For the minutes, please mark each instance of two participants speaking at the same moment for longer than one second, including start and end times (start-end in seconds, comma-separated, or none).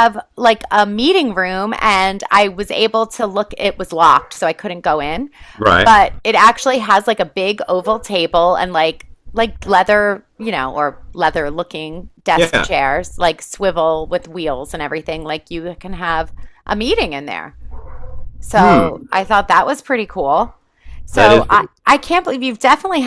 none